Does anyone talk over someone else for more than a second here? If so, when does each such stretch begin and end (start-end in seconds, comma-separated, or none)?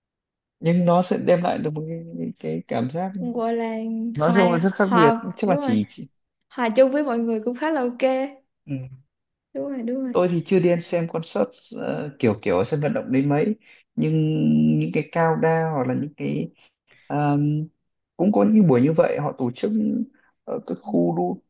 4.2-5.8